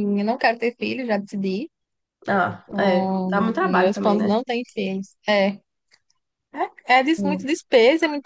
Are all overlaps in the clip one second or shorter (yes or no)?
no